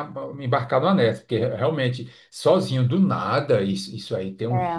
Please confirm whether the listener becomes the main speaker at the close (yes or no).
no